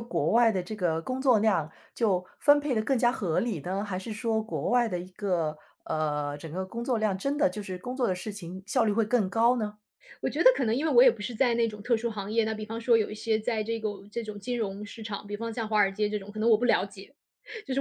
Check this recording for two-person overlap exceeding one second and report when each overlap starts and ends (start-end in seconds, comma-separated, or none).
none